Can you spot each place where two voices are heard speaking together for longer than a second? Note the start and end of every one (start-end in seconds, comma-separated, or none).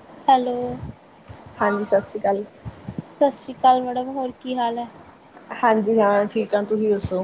none